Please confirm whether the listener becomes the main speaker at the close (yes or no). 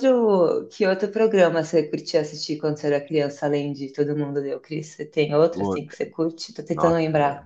yes